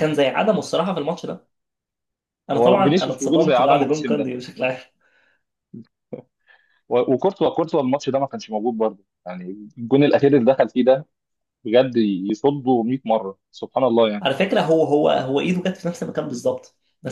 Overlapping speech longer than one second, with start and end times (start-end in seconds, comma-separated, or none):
2.5-4.3